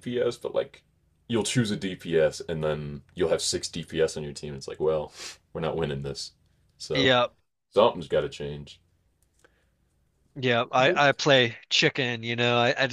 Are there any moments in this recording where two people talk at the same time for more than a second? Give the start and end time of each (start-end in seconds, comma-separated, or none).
none